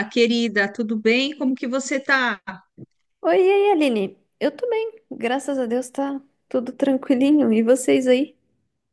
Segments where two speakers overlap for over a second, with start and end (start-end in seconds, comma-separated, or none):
none